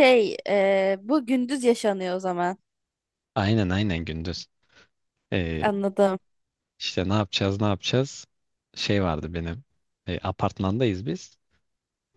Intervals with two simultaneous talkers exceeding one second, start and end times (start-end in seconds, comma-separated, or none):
none